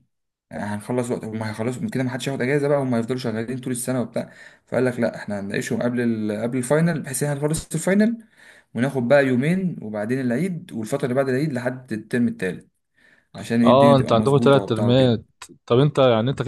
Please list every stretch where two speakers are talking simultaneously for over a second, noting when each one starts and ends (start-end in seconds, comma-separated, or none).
13.6-15.2